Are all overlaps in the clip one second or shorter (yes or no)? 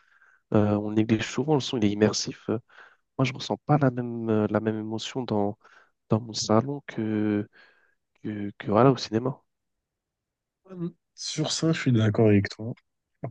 yes